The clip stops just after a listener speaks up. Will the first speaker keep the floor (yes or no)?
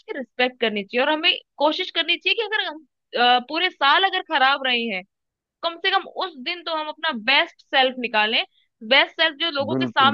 no